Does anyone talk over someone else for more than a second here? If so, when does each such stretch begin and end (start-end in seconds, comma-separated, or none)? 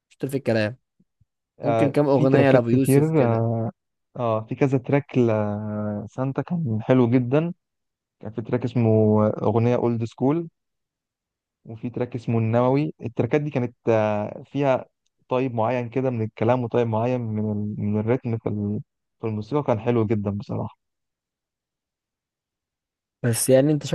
1.6-3.5